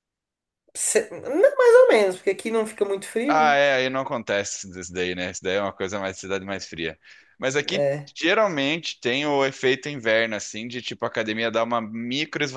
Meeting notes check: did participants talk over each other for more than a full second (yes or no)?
no